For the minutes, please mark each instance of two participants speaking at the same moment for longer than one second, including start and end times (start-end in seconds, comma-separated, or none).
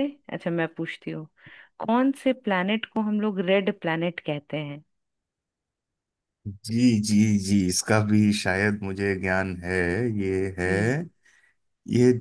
none